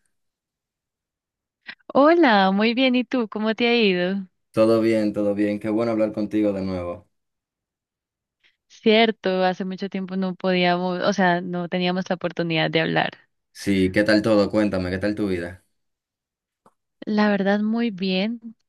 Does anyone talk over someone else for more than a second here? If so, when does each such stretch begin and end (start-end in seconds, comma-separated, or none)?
none